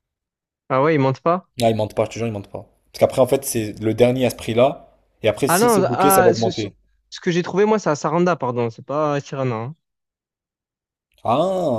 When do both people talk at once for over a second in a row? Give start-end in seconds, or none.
5.5-6.7